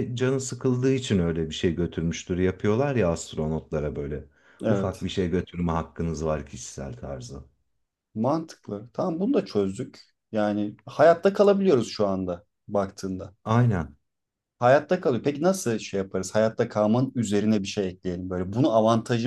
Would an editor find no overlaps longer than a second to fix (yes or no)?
yes